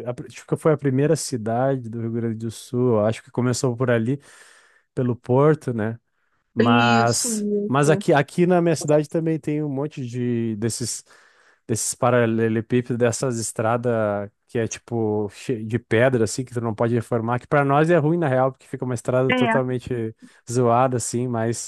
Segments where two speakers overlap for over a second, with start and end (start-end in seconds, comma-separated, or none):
6.6-8.0